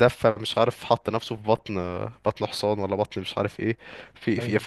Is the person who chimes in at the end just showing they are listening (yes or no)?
yes